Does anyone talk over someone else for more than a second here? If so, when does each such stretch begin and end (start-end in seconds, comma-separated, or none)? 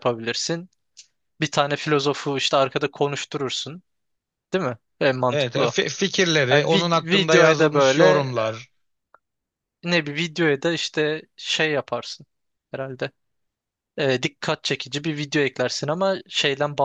6.5-8.3